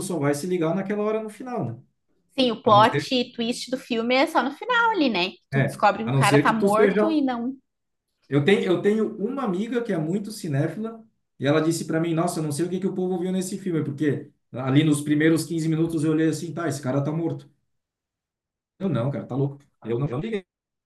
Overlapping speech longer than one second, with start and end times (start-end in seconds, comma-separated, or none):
5.5-7.2